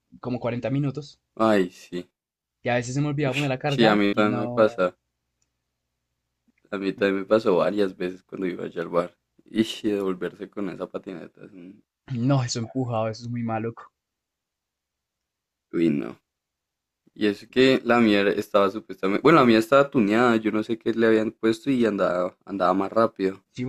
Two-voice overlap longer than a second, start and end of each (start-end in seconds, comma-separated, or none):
3.2-4.9